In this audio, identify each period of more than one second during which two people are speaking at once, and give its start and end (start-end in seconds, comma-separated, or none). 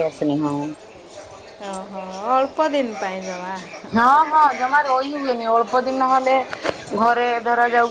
none